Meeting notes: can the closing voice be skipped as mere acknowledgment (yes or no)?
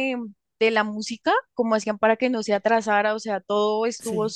yes